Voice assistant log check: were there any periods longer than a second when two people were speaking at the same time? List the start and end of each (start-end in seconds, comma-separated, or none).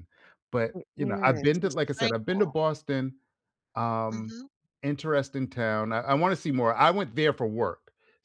0.7-2.5